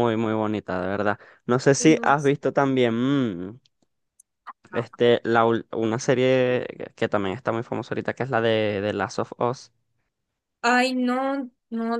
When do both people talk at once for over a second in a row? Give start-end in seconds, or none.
none